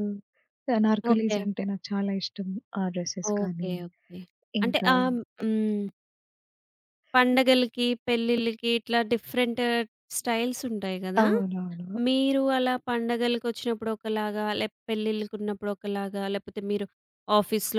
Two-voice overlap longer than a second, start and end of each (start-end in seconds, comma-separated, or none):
none